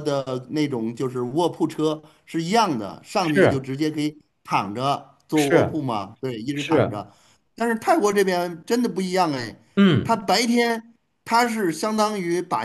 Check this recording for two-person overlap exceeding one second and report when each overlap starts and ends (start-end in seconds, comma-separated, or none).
none